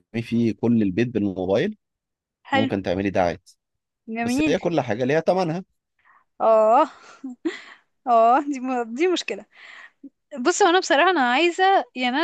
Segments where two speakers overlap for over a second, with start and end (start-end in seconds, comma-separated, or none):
none